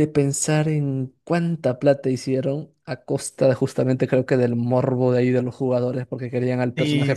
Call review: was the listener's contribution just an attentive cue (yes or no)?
no